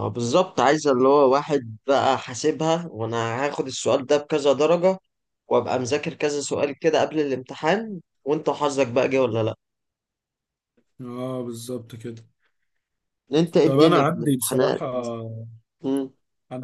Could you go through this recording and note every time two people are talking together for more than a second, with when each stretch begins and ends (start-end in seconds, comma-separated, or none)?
13.6-14.8